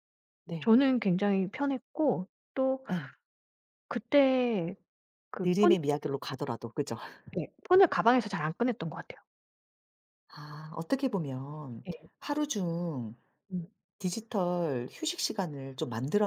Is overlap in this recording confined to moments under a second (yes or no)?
yes